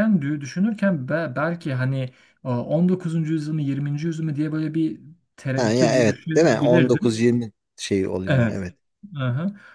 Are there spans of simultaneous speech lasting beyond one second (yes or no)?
yes